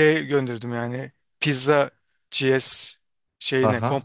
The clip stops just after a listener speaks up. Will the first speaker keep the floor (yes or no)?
no